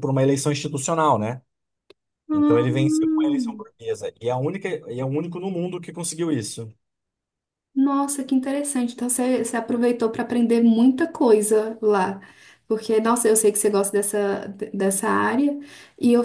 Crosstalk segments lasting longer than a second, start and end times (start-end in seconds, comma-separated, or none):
2.3-3.6